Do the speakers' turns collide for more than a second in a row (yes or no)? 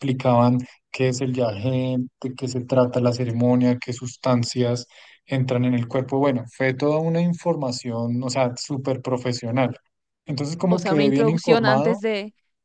yes